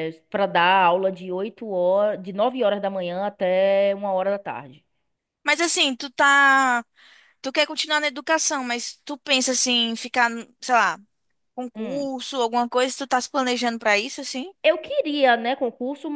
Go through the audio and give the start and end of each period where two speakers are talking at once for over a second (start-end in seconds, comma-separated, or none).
none